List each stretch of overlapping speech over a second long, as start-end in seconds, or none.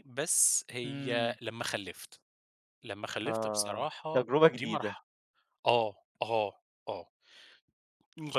3.2-5.0